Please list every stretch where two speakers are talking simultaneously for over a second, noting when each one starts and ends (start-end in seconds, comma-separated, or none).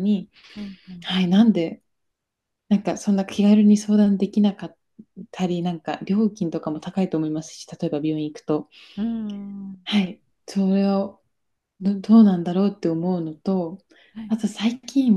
none